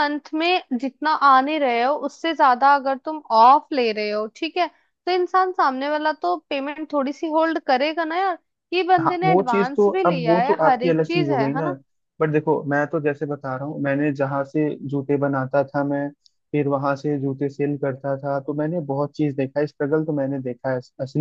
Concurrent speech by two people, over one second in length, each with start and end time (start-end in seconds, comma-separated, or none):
9.0-11.7